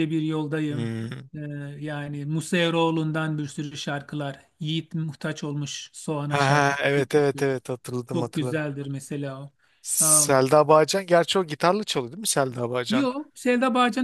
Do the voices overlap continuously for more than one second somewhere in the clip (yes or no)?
no